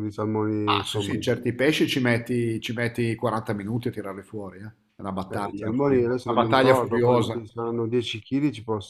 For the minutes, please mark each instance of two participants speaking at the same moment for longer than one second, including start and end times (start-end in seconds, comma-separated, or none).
5.3-7.5